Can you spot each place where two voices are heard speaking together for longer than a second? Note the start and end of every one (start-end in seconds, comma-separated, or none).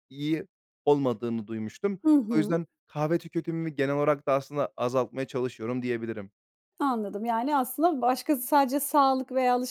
none